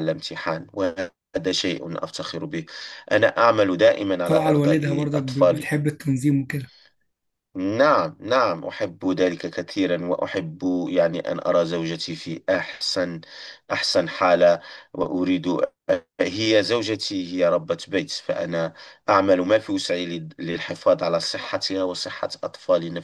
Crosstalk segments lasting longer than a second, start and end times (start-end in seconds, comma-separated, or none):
4.2-5.7